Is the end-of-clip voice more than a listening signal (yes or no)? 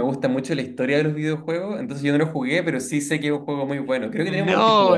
yes